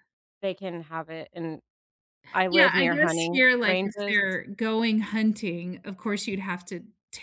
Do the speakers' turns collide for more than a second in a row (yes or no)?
yes